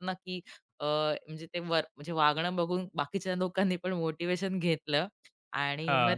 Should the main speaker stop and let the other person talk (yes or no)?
no